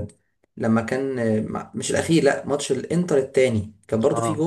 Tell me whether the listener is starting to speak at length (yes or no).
no